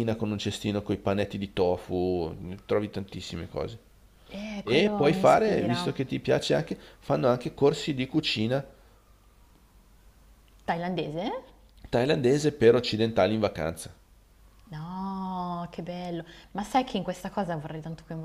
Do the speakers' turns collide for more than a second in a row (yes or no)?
yes